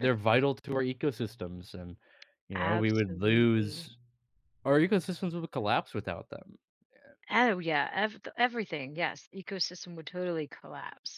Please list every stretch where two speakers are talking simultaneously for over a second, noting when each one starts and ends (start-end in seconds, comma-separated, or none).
2.5-3.9